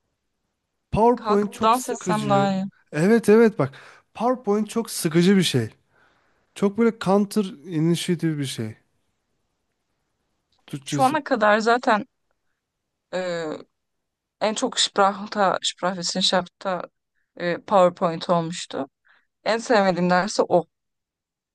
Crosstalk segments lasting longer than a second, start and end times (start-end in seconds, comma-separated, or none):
1.1-2.5